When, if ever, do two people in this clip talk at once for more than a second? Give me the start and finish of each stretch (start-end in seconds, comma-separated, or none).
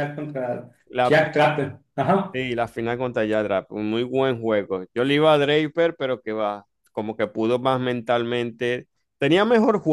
none